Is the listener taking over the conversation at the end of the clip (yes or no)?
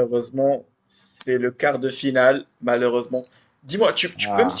no